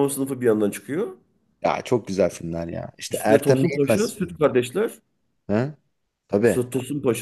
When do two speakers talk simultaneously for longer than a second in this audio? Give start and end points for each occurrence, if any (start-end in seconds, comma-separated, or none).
3.1-4.6